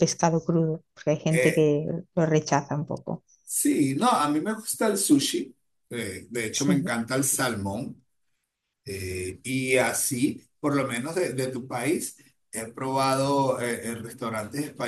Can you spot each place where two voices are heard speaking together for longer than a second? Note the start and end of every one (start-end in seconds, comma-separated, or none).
none